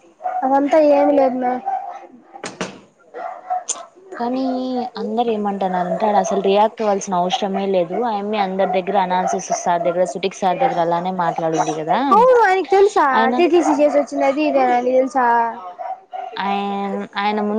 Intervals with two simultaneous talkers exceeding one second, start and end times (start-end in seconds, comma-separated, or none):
none